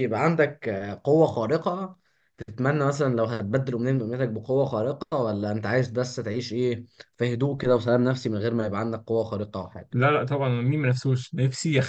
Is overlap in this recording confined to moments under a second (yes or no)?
yes